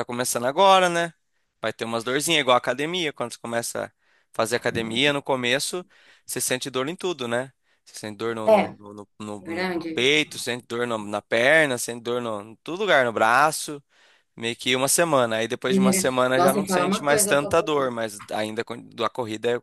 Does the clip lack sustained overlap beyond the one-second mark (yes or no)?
no